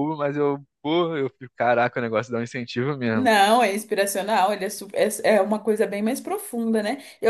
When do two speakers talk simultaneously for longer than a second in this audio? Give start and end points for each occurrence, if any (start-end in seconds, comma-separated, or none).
none